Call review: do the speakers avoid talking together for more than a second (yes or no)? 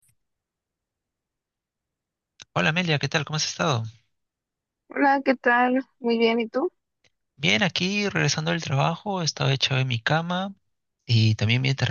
yes